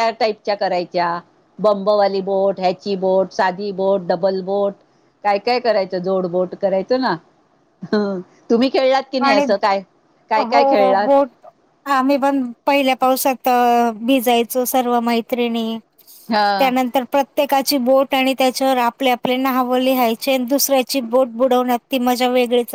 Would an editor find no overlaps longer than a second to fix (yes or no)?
yes